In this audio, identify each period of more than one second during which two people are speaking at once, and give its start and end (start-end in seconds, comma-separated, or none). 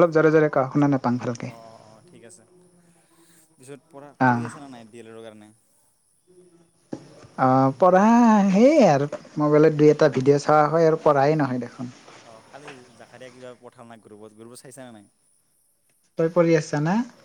none